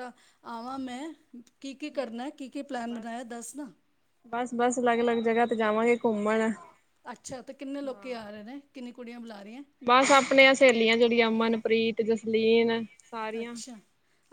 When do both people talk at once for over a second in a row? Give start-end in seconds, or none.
none